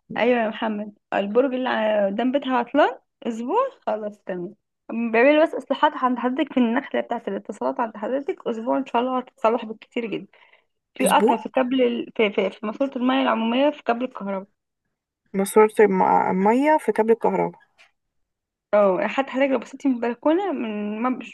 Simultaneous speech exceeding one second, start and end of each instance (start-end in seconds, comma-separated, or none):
none